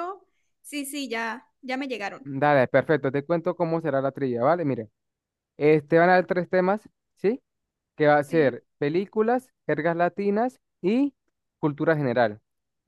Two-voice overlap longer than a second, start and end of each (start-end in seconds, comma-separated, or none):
none